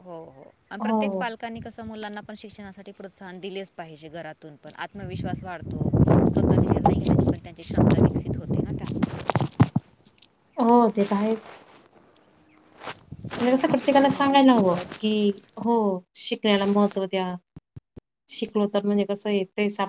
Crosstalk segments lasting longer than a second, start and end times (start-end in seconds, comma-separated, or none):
13.4-14.8